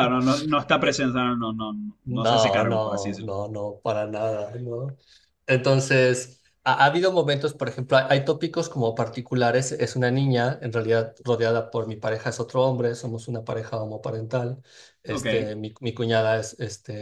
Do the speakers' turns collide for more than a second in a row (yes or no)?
yes